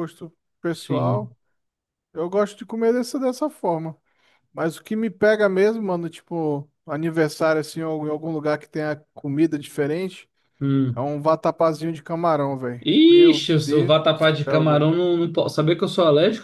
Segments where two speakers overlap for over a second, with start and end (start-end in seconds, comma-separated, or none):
12.8-14.9